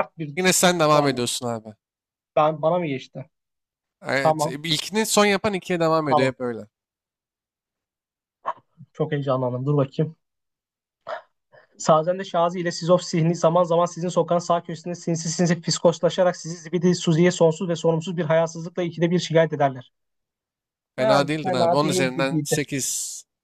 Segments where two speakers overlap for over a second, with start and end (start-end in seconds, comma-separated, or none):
21.0-22.6